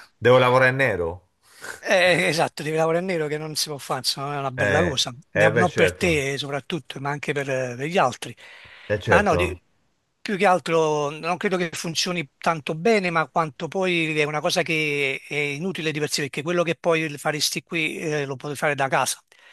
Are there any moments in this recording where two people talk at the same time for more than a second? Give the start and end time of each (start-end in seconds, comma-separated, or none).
4.6-6.3